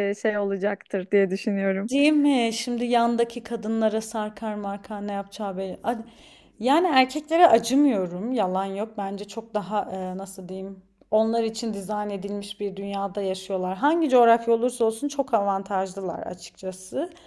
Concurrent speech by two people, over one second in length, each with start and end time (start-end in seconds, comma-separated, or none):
none